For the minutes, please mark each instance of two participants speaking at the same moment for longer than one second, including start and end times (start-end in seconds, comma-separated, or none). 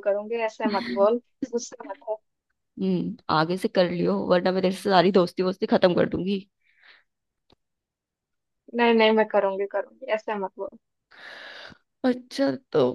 none